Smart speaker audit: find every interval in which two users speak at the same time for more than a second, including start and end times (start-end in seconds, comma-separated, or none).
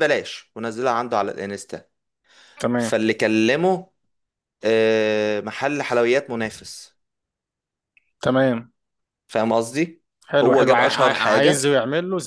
10.4-11.7